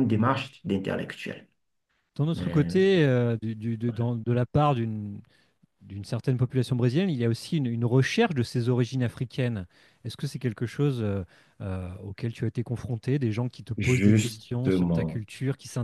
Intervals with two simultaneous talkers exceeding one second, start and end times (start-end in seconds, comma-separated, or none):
13.8-15.2